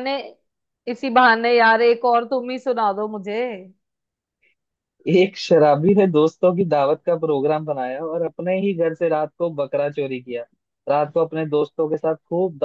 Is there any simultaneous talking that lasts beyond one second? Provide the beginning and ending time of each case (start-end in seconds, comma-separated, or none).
none